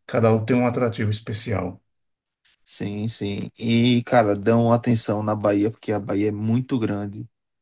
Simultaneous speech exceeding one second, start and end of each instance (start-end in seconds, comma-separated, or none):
none